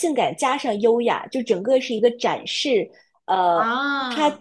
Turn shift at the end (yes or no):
no